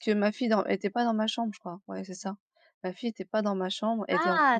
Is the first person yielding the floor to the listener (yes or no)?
yes